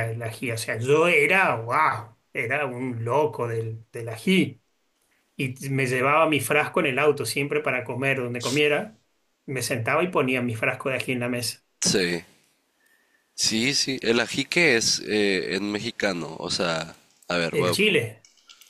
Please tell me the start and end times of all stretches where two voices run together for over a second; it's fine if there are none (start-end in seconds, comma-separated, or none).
none